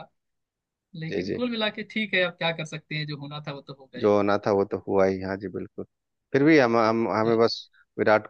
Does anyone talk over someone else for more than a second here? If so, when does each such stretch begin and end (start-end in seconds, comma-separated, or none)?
none